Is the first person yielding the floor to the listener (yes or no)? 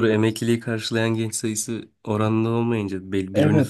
yes